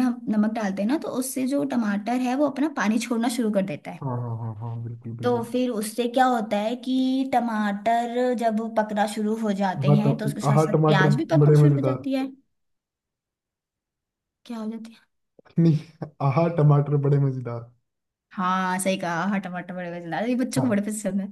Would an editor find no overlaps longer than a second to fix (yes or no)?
no